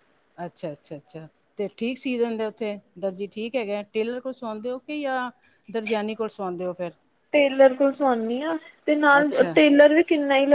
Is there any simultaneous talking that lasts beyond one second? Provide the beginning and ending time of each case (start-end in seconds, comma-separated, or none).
none